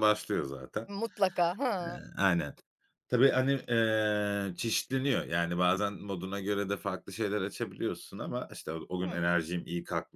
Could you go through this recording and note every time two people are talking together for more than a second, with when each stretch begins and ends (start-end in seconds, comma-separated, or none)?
none